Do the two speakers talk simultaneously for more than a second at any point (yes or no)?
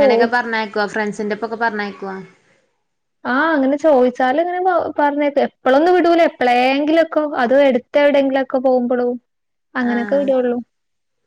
no